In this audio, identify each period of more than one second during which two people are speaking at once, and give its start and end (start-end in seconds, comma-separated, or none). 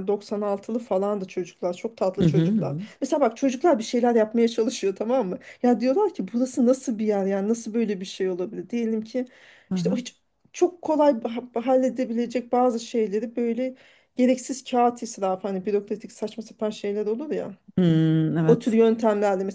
none